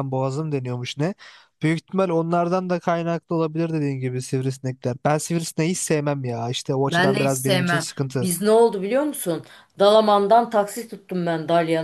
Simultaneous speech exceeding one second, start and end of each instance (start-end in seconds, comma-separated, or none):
6.9-8.3